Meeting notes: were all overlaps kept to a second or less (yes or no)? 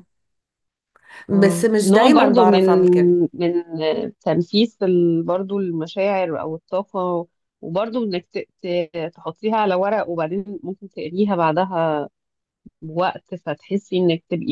no